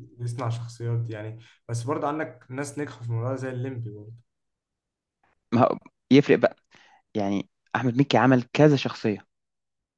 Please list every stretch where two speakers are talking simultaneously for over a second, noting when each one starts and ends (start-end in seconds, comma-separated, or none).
none